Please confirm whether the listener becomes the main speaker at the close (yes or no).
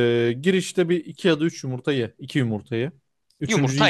no